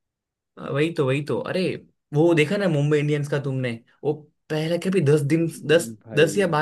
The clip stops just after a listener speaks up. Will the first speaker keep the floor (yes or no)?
yes